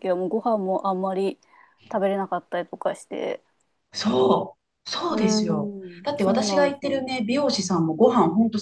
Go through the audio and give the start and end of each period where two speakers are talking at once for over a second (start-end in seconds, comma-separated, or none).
5.1-7.0